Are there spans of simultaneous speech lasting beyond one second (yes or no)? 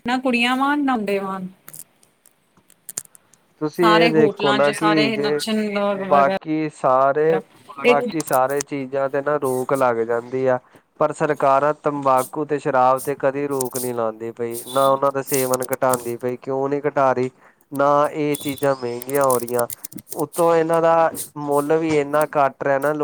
yes